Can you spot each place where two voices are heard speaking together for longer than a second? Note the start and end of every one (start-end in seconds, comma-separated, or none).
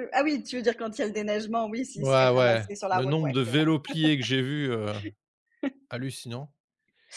2.0-3.8